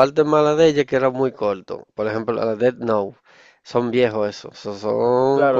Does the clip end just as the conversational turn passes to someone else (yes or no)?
yes